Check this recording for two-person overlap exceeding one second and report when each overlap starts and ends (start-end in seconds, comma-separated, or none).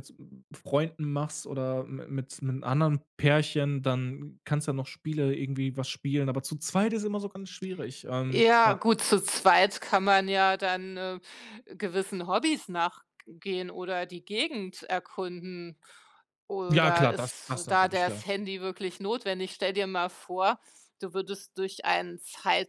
16.7-18.2